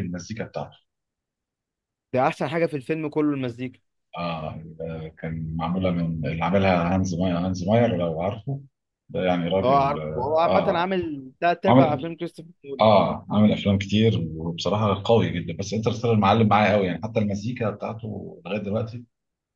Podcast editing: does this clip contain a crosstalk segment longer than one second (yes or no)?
yes